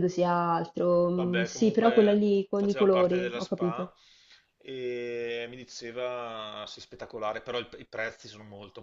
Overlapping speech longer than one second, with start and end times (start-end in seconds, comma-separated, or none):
1.1-3.9